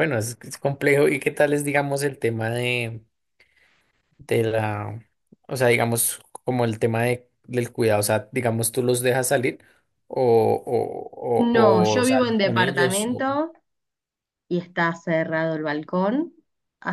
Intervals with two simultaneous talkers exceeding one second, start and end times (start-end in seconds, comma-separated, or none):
11.4-13.2